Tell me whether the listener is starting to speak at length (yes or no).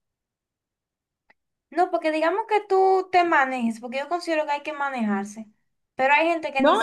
yes